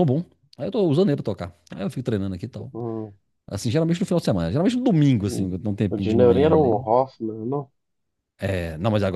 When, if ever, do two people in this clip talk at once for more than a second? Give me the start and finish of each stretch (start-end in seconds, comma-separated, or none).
5.2-6.9